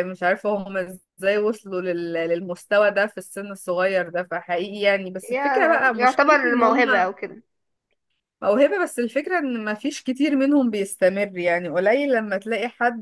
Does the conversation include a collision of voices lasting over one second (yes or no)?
yes